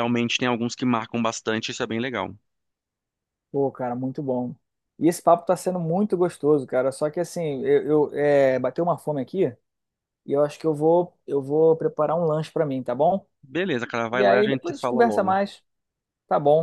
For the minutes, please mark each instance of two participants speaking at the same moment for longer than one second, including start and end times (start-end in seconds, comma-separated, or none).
14.1-15.4